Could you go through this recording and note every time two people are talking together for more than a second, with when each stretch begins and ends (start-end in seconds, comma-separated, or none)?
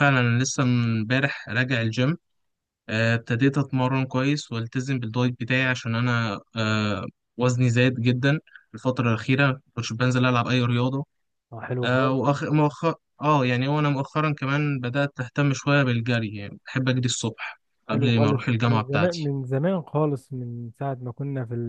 17.9-19.3